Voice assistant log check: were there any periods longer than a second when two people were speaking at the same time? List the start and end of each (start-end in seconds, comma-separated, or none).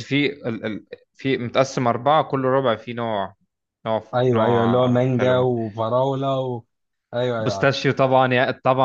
4.1-5.5